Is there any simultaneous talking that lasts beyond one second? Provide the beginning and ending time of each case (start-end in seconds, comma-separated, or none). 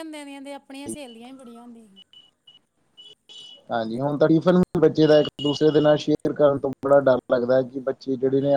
none